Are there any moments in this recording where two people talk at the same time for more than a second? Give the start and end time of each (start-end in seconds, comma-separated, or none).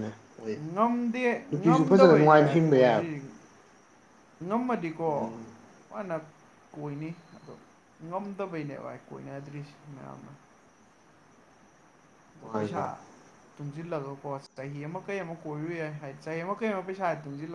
1.6-3.1